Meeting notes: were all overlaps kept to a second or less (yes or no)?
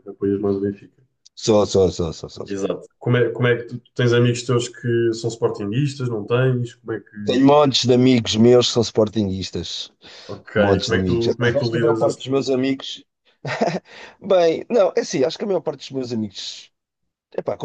no